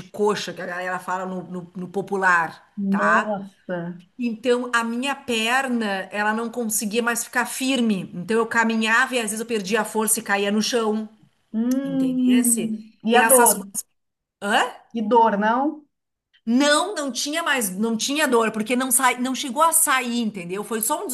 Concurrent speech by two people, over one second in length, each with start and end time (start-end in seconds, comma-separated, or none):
11.8-13.6